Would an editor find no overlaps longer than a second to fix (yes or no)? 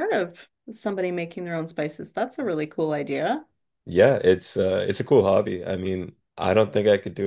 yes